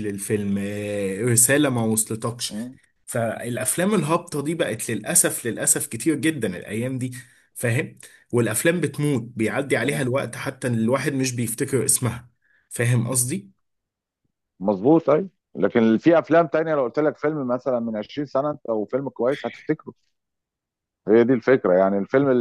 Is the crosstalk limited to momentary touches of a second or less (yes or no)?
yes